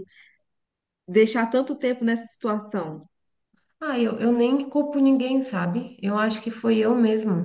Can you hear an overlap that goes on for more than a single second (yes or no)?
no